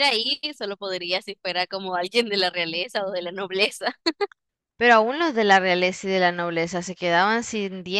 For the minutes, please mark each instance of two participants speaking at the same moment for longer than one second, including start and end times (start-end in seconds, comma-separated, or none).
none